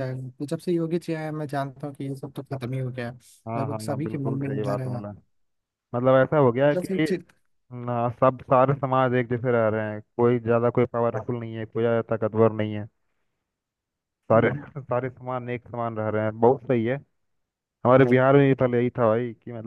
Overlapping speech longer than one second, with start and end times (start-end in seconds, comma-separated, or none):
3.6-5.0